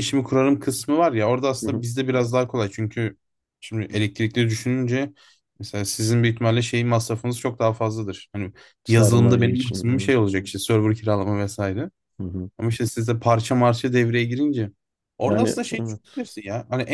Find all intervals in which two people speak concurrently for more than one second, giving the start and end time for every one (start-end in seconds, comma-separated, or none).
8.8-10.2